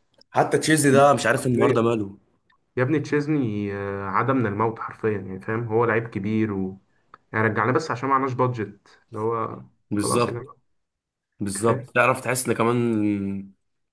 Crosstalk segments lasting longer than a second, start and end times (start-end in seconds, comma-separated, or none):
none